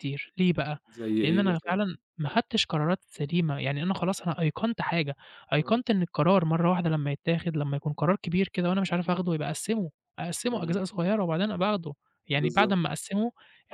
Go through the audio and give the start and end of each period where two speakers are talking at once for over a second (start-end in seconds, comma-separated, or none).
none